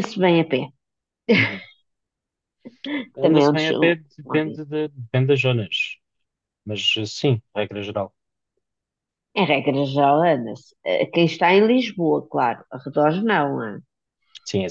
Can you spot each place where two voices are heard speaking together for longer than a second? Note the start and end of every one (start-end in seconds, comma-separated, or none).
3.2-4.6